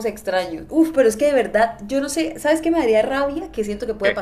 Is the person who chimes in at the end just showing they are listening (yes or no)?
yes